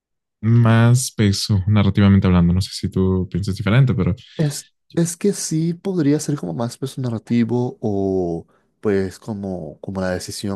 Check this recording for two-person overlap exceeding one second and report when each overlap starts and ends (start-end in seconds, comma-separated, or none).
none